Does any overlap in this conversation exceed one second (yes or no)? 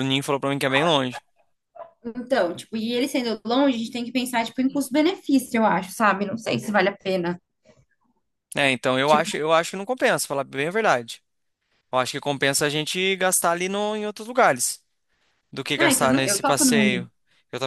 yes